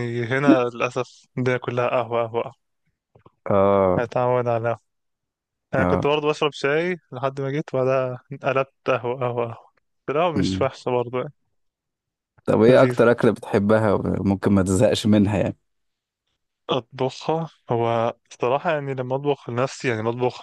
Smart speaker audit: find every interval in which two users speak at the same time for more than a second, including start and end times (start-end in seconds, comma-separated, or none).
none